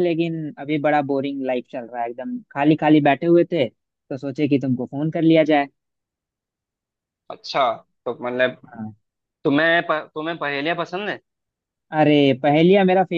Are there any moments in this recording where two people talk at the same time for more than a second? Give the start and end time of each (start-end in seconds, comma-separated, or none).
none